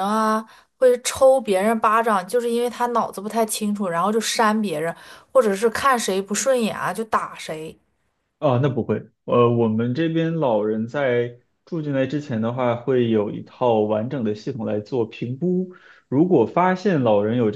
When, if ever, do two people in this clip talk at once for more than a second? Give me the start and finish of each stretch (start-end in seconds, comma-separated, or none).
none